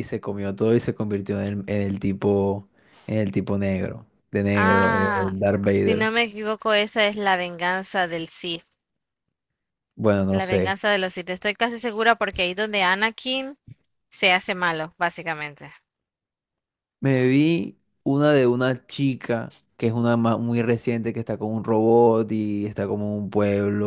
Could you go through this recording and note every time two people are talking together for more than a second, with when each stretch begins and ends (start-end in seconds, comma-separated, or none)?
4.5-6.1